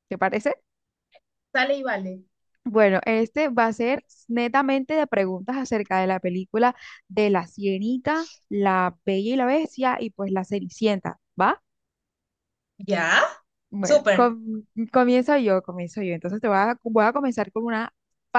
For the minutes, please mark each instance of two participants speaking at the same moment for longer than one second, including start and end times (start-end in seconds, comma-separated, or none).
none